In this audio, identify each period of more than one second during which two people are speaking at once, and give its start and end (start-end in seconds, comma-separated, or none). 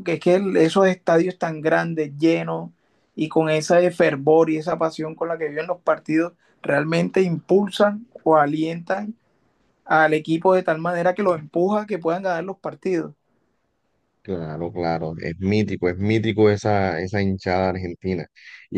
none